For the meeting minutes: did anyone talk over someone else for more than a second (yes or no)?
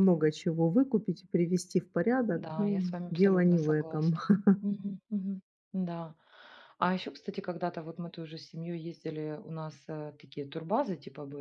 yes